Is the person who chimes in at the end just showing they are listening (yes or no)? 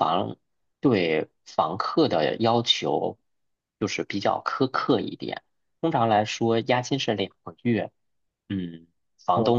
yes